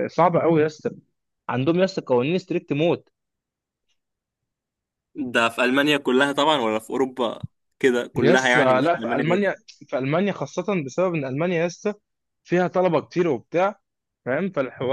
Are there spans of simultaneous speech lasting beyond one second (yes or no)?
yes